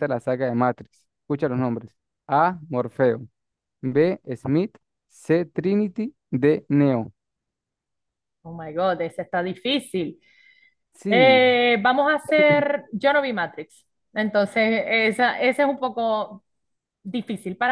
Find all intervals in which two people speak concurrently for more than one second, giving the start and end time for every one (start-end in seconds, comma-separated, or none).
none